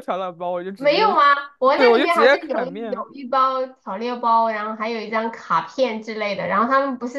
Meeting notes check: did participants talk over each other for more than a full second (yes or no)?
yes